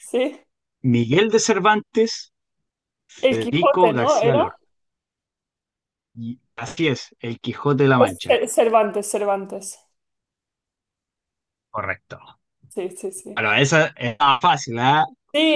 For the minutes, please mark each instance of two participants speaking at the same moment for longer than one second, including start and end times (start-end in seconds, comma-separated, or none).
3.2-4.6